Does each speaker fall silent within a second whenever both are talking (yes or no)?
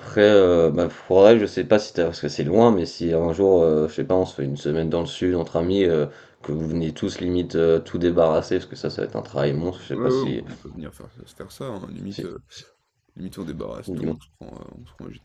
yes